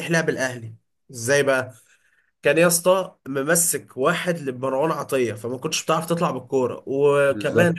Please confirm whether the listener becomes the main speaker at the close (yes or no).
no